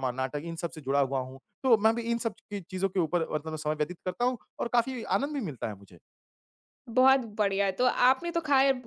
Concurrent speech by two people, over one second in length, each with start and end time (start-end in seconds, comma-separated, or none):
none